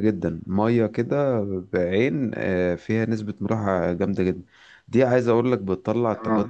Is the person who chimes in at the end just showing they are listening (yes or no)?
yes